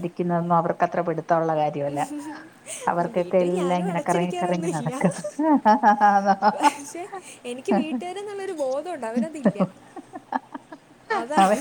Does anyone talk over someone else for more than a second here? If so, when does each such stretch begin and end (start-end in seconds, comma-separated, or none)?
3.0-4.9